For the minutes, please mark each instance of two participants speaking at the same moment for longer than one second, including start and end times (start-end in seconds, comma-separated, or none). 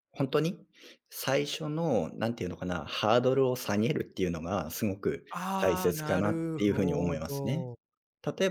5.6-7.7